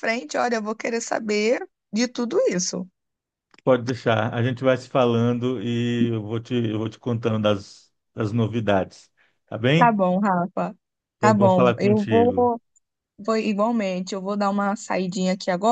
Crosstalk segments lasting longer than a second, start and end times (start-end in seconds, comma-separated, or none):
11.2-12.5